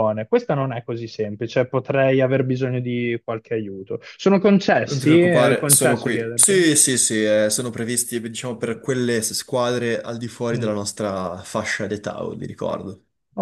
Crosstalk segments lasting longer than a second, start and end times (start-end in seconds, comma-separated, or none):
4.9-6.6